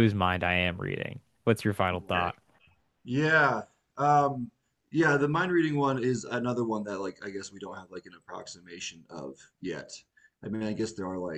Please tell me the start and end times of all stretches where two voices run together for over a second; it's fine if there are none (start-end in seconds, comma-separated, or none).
none